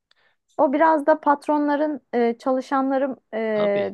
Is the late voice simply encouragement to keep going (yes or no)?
yes